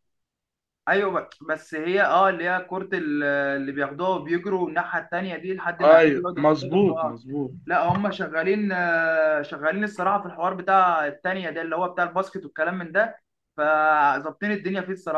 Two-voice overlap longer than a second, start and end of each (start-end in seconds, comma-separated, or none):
6.0-7.2